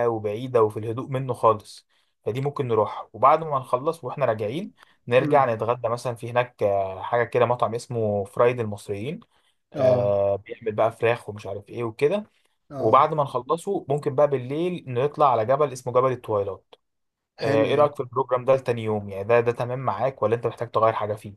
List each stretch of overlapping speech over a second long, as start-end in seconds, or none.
none